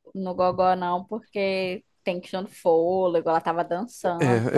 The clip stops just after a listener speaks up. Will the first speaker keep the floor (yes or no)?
no